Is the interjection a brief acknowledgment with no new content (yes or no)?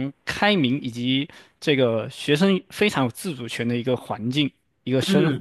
no